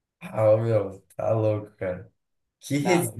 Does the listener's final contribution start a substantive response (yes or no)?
no